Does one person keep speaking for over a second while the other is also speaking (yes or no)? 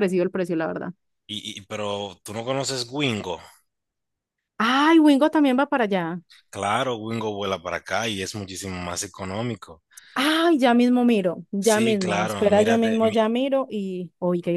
yes